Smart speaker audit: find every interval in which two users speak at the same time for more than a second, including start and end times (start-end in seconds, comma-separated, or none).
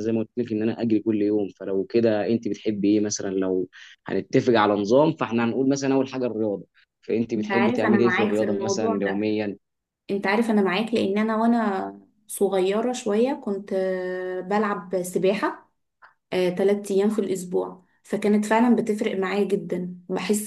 7.4-9.2